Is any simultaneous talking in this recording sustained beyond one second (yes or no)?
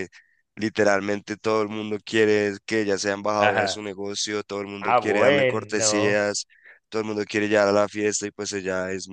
yes